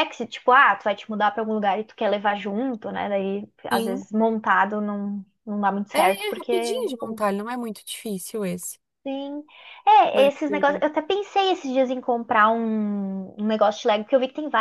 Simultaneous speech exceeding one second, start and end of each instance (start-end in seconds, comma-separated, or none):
5.9-7.2